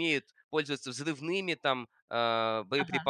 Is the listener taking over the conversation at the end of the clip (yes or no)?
no